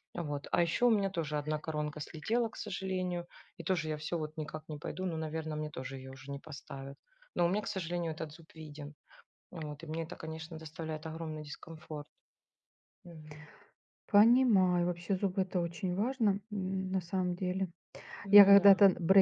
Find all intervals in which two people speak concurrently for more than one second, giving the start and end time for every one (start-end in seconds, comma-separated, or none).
none